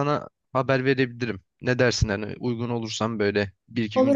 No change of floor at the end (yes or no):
no